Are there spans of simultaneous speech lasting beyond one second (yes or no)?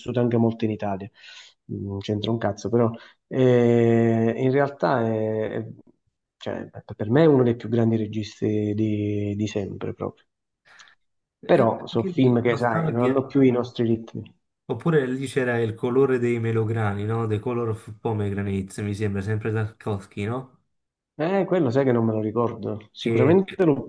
yes